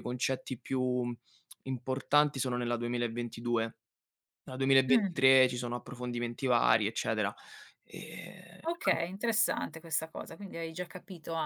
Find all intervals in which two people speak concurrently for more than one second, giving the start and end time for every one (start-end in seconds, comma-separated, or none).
none